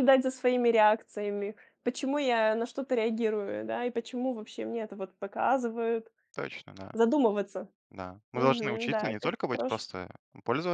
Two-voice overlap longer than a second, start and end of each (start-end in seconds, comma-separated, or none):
8.3-9.8